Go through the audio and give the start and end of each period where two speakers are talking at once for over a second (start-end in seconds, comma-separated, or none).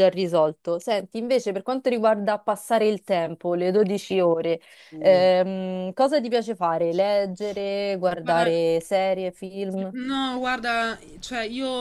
none